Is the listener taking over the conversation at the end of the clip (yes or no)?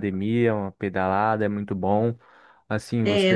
no